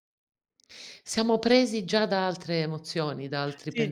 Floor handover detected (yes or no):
yes